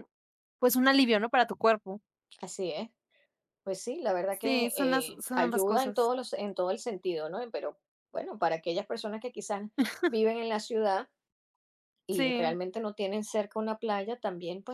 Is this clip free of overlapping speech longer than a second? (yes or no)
no